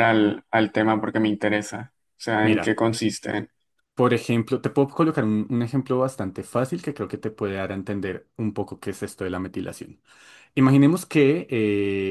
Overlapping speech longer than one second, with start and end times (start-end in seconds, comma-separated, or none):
none